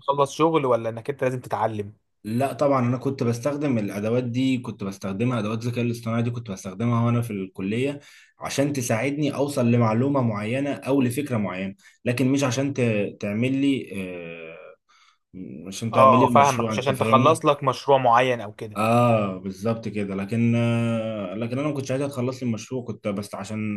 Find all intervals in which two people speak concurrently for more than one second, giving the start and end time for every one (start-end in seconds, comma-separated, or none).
15.9-17.4